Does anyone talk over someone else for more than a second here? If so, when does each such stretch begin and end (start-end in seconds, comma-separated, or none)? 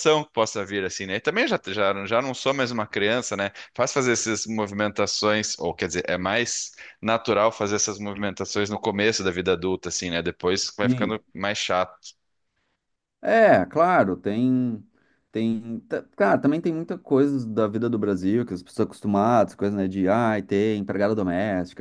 none